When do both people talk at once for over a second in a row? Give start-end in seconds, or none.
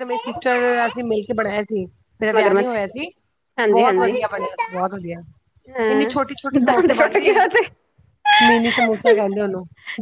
5.9-7.4